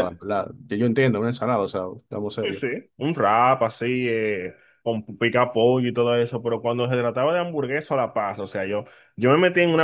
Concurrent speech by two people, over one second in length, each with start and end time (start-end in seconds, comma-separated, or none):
none